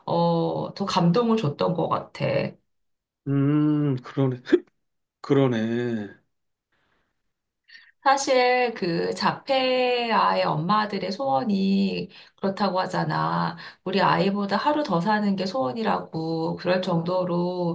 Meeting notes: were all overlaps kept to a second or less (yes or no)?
yes